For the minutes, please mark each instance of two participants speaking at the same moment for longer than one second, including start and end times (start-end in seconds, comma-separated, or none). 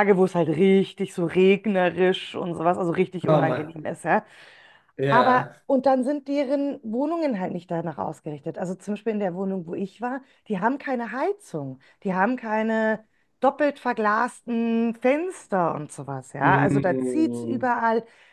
16.4-17.7